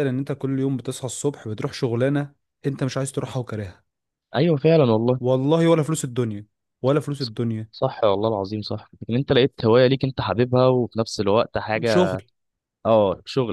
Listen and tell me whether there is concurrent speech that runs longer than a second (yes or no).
no